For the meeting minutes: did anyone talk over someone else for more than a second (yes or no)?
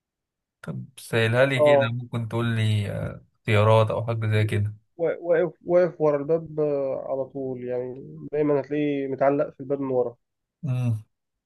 no